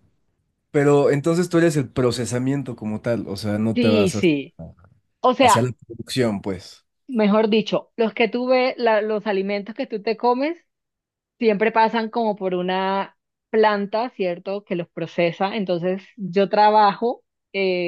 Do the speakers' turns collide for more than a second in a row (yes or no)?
no